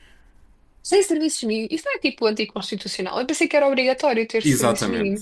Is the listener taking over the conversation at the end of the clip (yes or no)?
yes